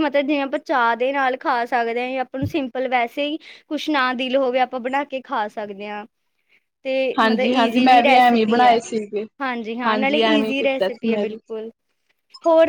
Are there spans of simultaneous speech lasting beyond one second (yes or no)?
yes